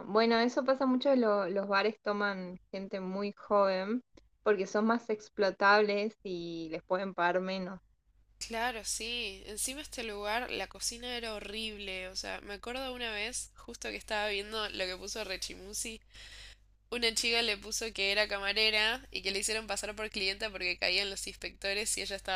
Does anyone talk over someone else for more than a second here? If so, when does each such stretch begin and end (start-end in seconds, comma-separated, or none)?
none